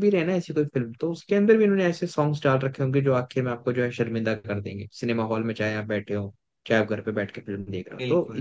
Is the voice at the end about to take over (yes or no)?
no